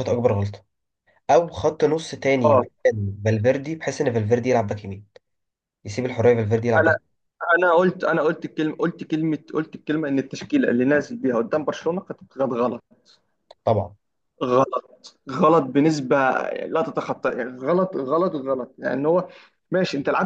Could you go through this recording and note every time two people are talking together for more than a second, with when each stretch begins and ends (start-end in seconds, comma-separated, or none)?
none